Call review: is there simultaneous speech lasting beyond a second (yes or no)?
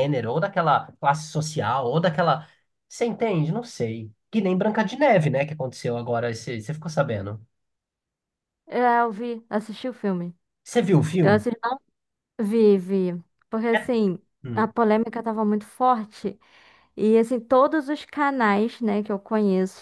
no